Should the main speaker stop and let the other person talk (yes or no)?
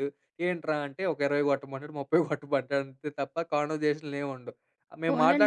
yes